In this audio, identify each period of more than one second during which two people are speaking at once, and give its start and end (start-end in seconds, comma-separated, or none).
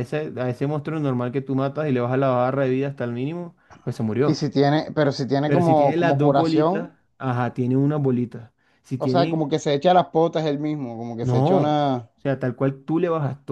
5.4-6.9